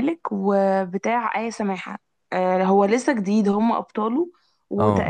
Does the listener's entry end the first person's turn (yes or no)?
no